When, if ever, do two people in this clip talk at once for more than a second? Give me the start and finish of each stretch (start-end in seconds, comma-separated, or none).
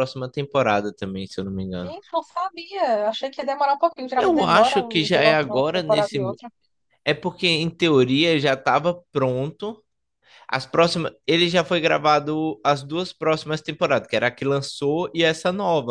4.2-6.2